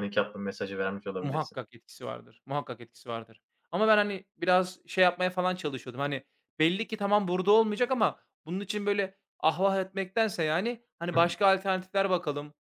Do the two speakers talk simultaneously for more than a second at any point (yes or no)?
no